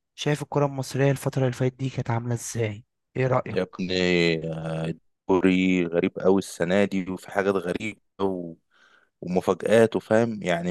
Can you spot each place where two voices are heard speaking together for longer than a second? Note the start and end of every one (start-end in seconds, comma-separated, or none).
none